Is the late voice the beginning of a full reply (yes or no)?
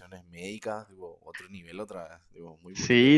yes